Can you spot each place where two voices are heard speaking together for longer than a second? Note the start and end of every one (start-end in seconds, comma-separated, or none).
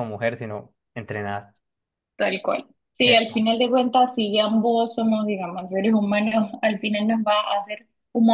none